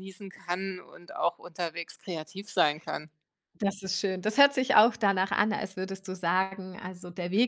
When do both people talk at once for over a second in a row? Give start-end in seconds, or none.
none